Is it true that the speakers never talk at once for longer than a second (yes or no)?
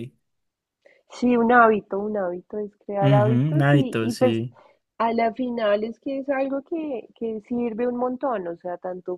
no